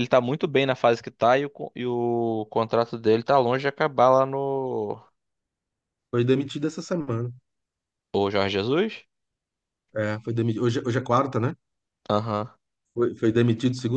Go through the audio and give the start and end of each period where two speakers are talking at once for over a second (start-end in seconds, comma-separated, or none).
none